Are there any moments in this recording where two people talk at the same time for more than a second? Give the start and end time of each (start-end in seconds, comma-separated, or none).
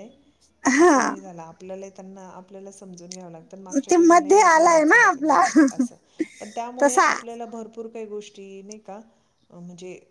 3.9-5.4